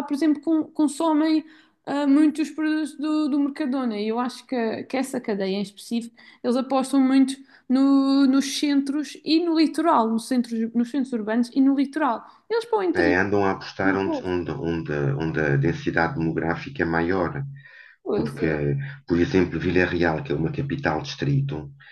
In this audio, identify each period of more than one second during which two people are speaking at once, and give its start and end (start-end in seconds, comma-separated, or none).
none